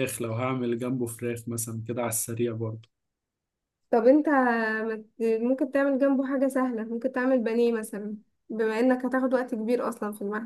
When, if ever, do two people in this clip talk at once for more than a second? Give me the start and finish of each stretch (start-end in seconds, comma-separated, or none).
none